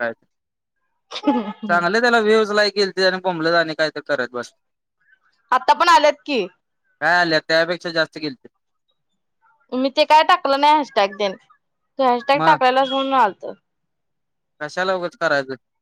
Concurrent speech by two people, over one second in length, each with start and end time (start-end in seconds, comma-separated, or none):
none